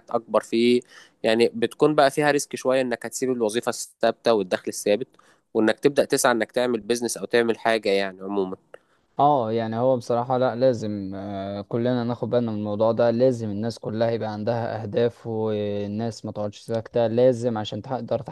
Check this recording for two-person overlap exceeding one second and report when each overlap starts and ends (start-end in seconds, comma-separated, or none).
none